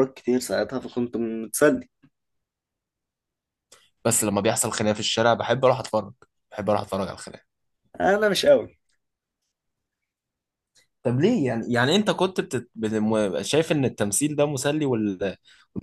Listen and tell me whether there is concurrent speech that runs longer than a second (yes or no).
no